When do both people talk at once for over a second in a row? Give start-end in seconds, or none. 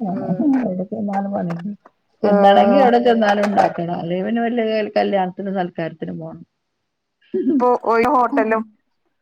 none